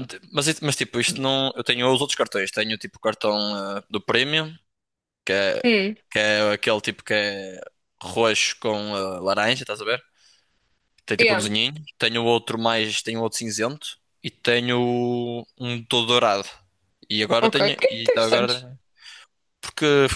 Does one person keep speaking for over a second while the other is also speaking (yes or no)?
yes